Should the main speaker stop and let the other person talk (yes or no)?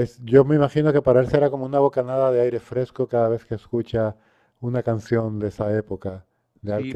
yes